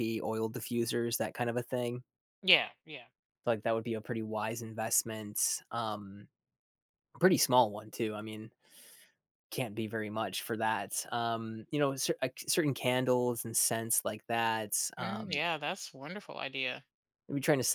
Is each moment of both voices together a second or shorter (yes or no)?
yes